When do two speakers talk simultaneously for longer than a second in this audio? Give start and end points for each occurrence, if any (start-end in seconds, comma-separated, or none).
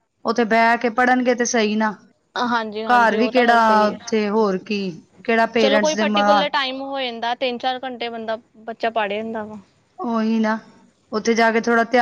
2.9-4.1